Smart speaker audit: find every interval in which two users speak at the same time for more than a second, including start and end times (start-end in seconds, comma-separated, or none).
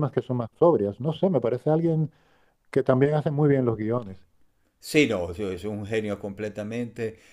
none